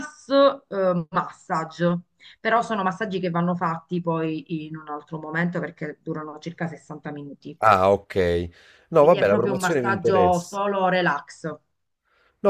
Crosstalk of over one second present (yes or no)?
yes